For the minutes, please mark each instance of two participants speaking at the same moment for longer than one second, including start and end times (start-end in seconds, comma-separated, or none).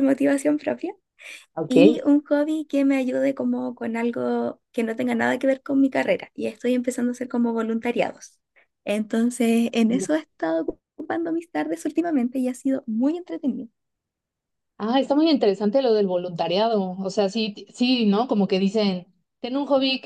none